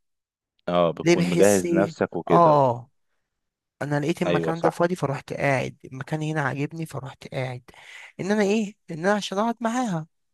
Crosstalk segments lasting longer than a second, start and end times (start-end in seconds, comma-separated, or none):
1.0-2.6